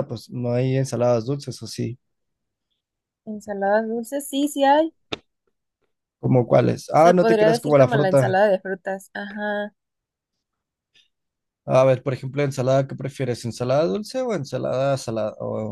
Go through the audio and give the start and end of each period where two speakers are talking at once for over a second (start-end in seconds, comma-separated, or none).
6.9-8.3